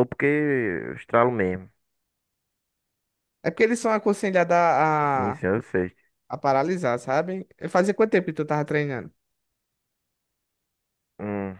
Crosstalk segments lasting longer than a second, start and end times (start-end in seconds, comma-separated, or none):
none